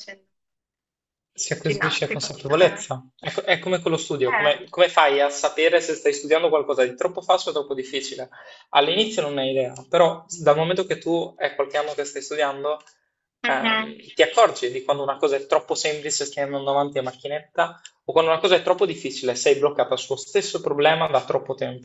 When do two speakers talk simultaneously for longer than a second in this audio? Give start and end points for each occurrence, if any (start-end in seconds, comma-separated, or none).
1.6-2.8